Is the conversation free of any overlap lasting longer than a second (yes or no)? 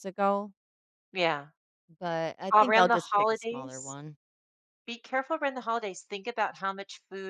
no